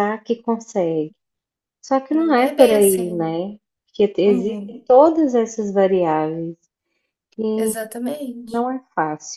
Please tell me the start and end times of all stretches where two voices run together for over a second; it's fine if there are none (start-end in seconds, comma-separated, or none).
2.1-3.4